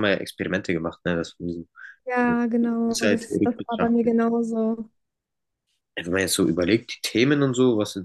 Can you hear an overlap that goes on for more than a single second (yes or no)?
yes